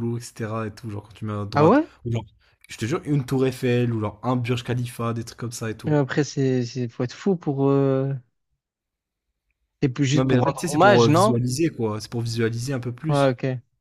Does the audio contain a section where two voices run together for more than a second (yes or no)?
yes